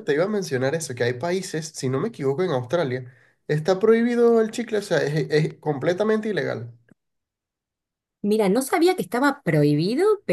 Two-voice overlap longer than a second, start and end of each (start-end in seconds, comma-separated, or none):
none